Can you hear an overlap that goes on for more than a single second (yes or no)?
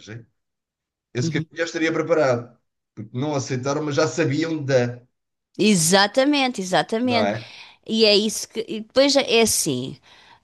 no